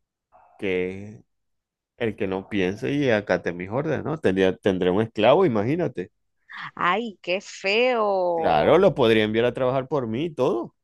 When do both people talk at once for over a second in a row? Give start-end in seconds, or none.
none